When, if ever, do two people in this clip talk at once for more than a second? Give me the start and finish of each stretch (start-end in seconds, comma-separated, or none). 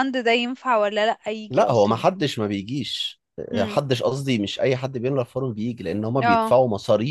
none